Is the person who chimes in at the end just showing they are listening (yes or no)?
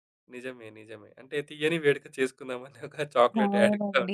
no